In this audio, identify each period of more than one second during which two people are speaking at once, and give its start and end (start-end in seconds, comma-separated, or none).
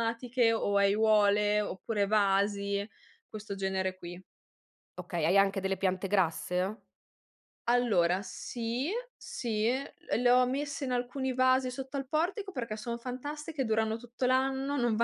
none